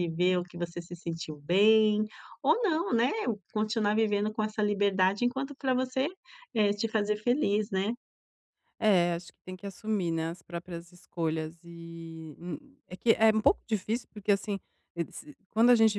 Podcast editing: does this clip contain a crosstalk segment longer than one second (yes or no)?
no